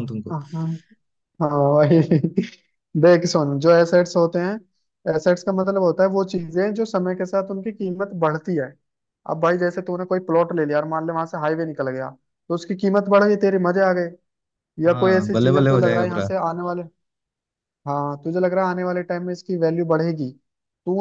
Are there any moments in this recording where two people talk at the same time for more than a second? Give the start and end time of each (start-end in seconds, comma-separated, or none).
14.8-16.3